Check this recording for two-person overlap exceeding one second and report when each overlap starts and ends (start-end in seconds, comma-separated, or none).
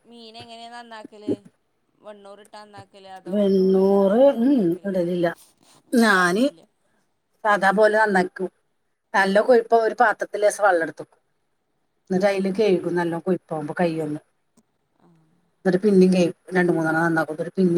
3.3-4.9